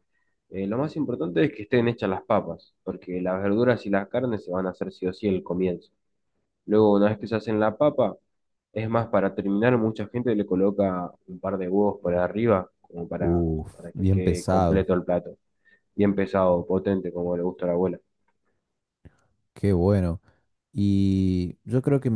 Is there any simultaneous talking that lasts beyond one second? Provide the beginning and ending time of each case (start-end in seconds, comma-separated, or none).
13.2-14.9